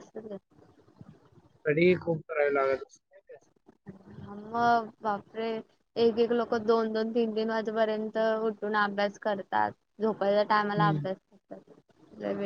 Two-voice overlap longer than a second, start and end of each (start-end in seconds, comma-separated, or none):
none